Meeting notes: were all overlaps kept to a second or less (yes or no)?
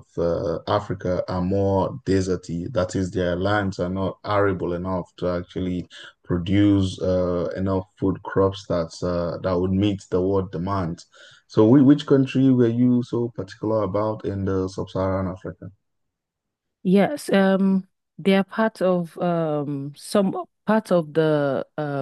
yes